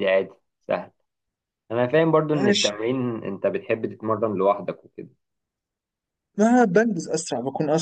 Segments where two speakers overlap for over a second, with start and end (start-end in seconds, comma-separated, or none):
none